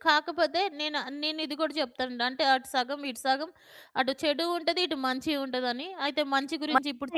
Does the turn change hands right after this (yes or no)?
yes